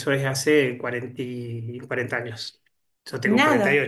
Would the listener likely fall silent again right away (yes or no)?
no